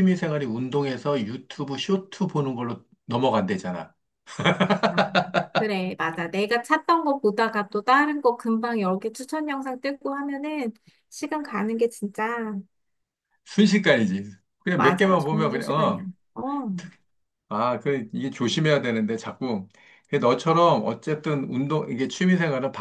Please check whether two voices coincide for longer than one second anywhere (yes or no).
yes